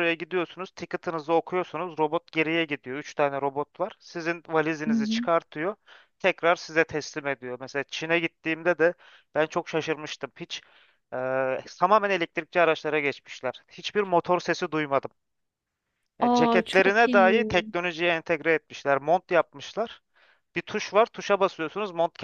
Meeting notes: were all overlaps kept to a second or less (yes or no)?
no